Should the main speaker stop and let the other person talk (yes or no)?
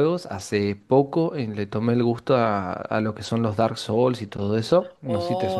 yes